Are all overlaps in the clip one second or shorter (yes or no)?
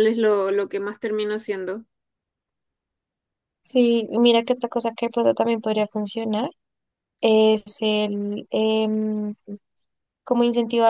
yes